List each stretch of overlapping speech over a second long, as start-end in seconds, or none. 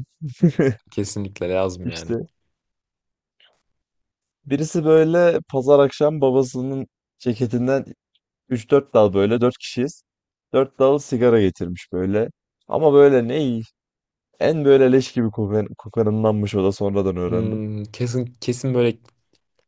none